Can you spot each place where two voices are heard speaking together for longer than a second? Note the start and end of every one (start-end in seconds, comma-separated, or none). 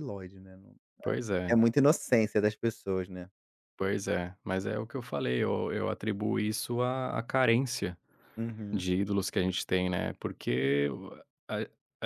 none